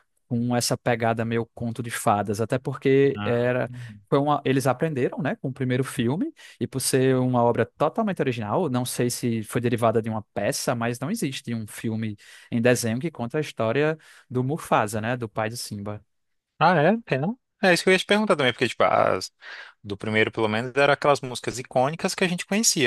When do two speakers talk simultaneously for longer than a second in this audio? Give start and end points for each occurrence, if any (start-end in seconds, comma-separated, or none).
none